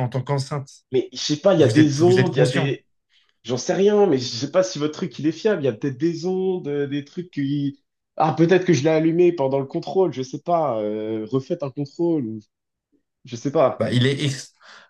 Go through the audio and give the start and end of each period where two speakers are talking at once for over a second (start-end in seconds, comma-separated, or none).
1.6-2.8